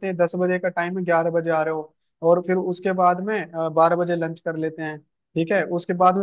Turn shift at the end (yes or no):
no